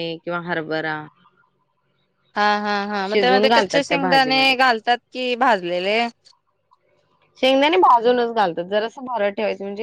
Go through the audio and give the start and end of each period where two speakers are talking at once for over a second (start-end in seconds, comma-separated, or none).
3.1-4.5